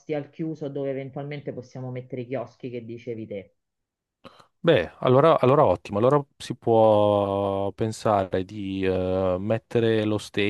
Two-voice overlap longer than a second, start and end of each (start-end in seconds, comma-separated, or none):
none